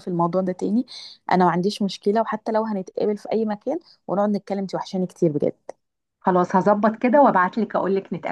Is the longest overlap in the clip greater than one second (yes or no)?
no